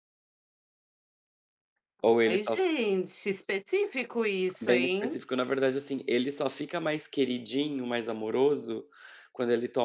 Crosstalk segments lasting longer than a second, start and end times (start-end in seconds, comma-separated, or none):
none